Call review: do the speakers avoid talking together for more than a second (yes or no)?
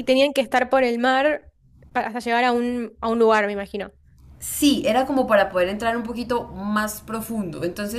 yes